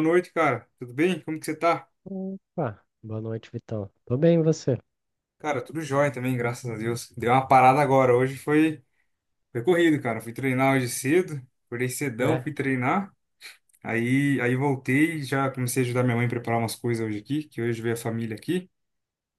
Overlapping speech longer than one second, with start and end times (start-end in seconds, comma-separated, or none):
none